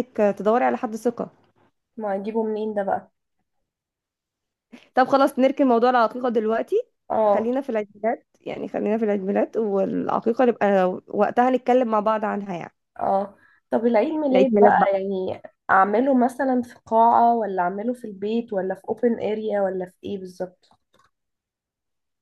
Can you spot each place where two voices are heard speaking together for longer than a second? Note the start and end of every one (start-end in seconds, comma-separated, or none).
none